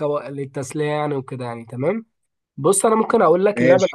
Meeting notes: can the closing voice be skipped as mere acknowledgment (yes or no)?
yes